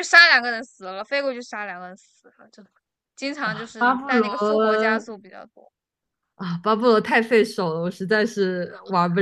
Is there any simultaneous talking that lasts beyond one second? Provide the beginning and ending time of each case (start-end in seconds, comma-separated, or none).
none